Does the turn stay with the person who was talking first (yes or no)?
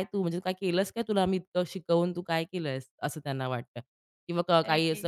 yes